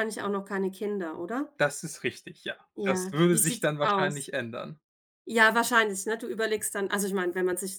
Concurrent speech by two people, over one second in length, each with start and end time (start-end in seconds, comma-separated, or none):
2.8-4.3